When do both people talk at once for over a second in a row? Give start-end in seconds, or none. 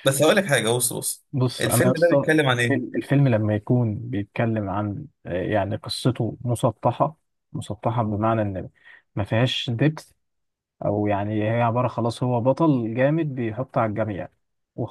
1.6-3.0